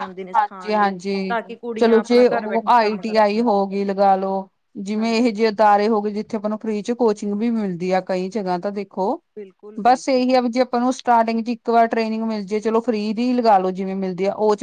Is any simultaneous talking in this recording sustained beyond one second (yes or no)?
yes